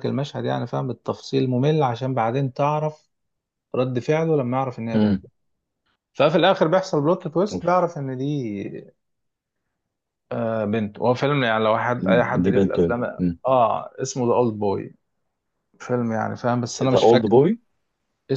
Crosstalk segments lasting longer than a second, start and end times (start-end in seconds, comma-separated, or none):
none